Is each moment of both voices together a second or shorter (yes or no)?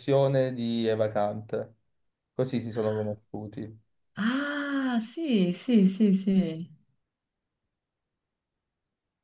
yes